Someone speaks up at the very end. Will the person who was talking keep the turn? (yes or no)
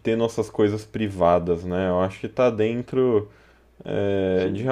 yes